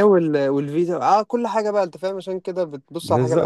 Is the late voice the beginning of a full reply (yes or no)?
yes